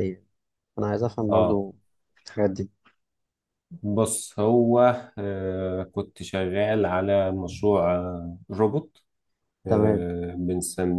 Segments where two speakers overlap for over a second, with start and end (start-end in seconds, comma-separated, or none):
none